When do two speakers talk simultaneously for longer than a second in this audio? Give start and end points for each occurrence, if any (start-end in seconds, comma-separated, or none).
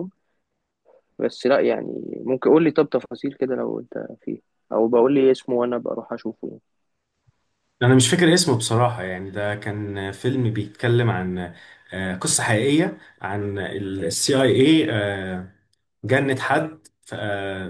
none